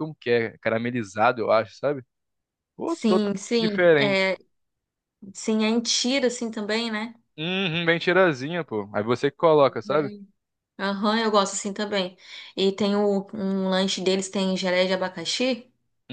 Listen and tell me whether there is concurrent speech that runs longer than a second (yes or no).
yes